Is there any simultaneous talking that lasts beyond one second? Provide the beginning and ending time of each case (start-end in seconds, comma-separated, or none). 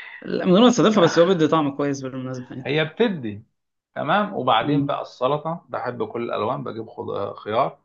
none